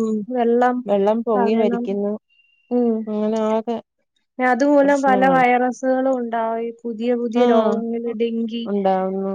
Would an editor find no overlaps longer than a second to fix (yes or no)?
yes